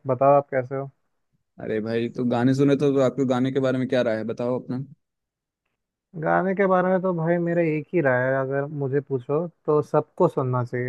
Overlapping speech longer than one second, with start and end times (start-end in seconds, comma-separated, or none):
none